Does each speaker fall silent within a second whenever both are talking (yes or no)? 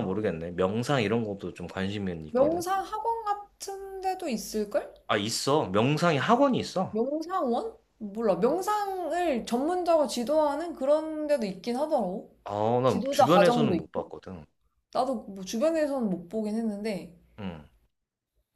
no